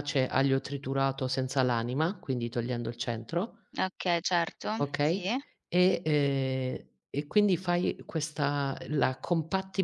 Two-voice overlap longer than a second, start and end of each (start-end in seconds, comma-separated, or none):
none